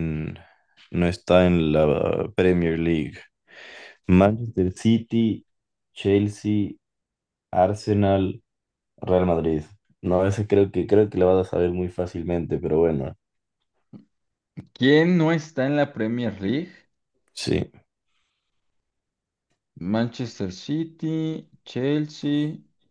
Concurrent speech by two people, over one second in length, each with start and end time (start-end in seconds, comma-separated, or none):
none